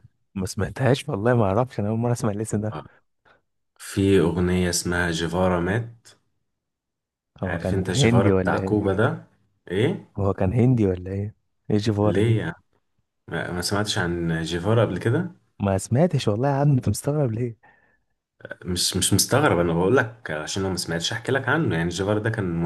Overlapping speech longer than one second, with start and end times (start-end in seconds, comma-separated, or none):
7.4-8.9